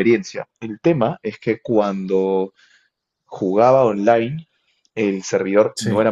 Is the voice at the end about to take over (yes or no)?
no